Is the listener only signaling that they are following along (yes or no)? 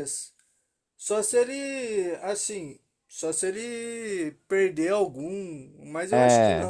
no